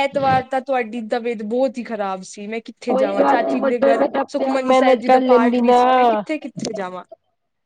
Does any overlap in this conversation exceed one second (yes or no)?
yes